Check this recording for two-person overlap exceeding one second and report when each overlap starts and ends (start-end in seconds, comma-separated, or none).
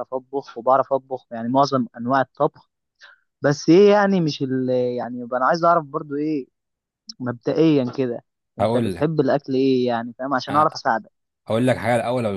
none